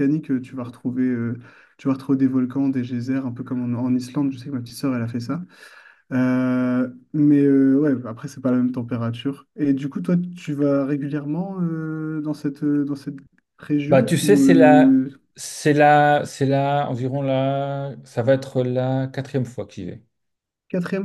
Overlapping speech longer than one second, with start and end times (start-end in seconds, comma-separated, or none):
13.9-15.1